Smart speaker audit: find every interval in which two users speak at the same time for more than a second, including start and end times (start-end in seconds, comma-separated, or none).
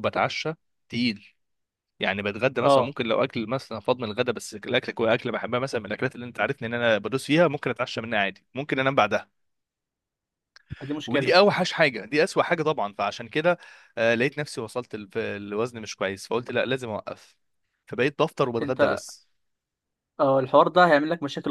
none